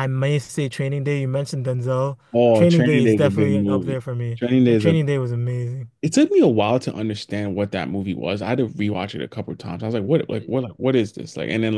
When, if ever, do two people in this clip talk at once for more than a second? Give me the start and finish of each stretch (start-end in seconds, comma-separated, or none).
2.5-5.0